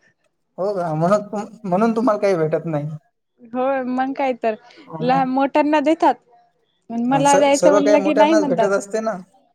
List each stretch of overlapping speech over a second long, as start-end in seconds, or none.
7.1-8.7